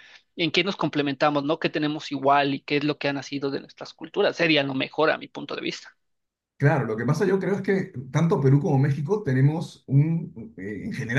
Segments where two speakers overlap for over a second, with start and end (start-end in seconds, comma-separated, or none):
none